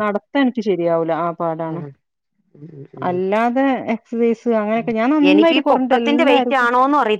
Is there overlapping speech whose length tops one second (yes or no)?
yes